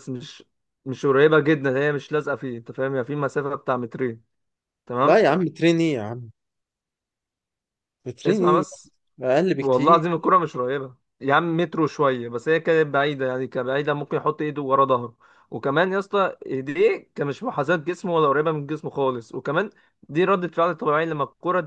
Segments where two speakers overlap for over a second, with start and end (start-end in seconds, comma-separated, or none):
none